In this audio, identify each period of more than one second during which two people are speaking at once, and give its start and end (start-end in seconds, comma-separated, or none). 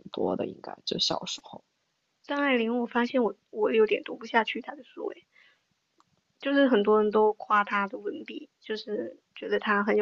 none